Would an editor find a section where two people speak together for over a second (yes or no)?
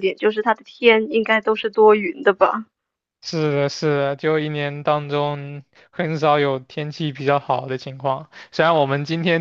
no